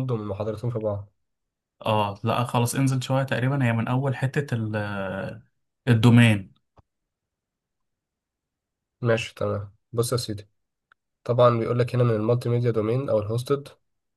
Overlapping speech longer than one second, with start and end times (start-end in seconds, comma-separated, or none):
none